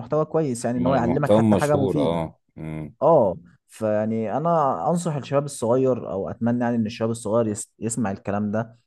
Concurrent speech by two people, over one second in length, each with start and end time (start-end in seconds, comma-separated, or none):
0.8-2.2